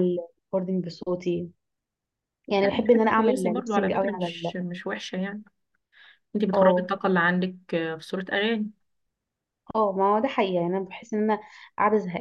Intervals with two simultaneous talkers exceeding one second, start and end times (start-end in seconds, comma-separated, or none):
2.6-4.5